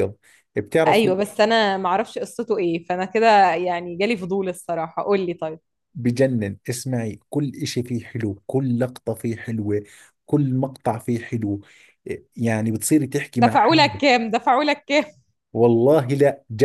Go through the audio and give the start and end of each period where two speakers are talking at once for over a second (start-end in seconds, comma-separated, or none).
none